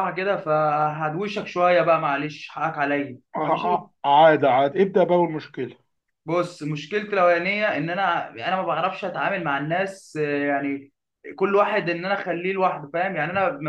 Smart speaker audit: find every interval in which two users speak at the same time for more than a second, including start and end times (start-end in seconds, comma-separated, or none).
none